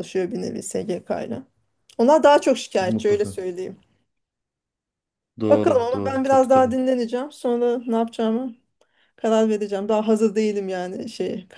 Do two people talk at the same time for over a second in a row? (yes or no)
yes